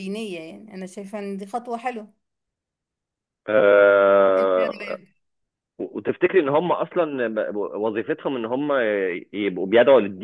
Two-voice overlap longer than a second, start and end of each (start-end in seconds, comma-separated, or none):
none